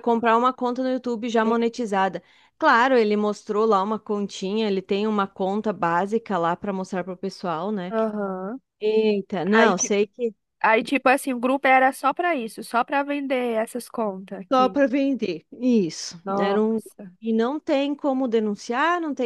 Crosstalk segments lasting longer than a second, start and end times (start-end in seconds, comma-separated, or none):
none